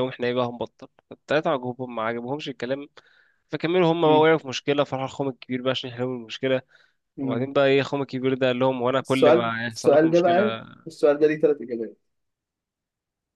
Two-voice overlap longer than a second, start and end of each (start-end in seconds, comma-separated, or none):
9.0-10.6